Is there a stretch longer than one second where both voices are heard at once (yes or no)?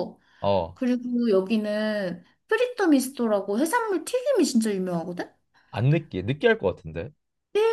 no